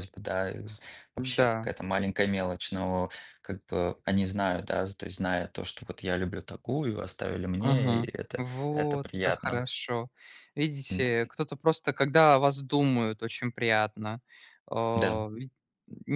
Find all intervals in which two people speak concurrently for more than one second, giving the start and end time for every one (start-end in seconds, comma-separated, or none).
7.6-9.6